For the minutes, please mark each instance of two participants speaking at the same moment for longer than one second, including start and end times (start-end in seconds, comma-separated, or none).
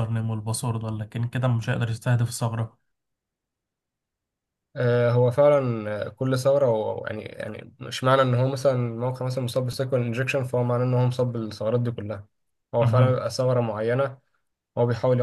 none